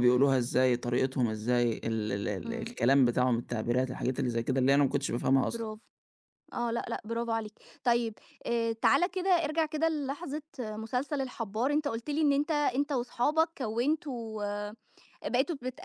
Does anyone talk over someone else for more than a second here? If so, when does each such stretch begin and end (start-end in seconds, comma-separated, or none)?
none